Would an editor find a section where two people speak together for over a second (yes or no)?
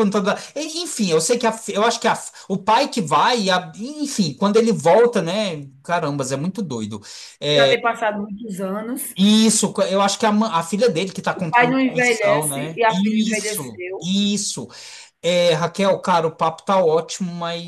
yes